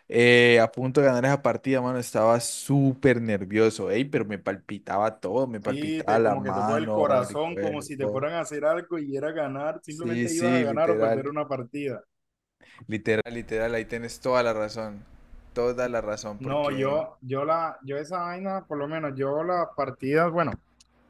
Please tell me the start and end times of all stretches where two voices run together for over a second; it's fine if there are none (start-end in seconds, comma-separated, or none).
5.6-8.2, 9.9-11.4